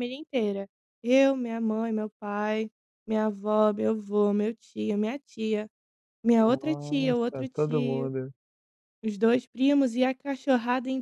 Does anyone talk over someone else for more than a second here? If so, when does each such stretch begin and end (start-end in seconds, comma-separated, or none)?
6.4-8.1